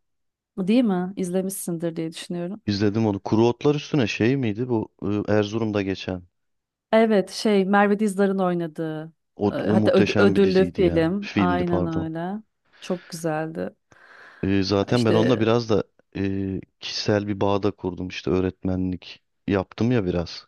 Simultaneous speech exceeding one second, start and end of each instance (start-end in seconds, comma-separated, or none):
9.5-12.1